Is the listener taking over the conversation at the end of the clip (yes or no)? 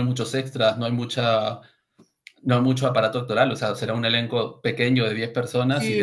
yes